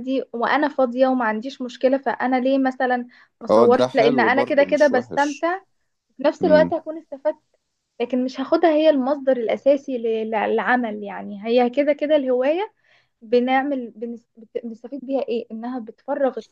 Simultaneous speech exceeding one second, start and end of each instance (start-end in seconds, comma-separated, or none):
3.5-5.5